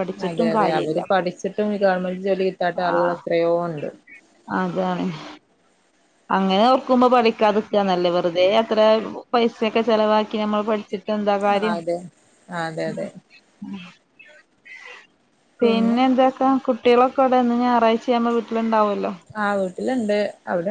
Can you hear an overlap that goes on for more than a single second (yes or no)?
no